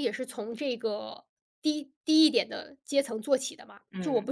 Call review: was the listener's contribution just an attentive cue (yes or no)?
yes